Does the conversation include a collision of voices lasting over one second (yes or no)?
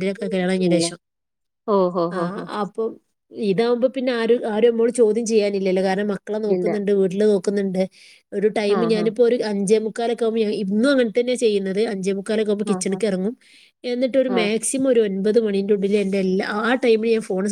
no